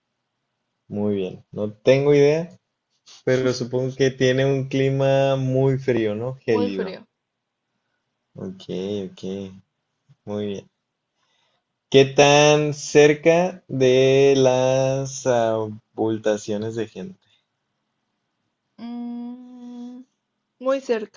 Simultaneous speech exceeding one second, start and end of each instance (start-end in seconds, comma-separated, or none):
none